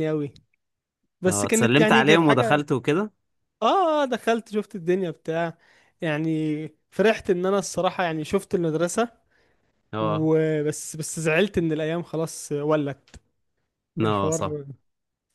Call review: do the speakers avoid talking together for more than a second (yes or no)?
no